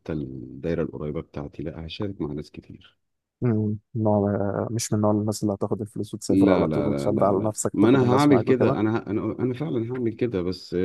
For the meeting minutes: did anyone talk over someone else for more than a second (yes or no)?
yes